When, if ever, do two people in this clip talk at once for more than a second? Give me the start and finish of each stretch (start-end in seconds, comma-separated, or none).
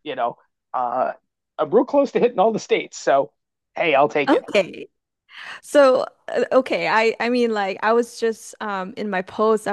none